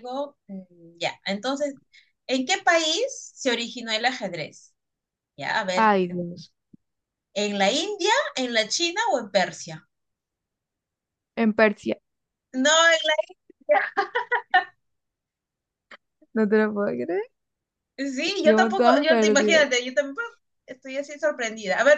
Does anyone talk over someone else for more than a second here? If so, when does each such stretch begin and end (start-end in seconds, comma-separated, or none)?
18.4-19.7